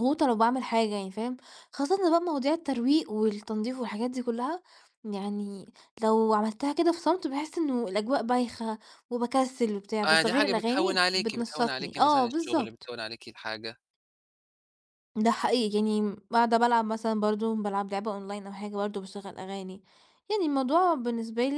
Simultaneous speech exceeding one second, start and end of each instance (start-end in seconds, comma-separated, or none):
10.1-12.9